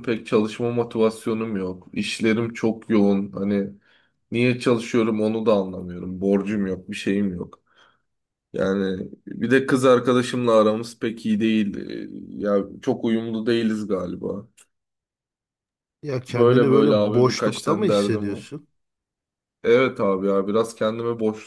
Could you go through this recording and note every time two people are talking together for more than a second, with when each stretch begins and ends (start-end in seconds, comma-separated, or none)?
16.3-18.5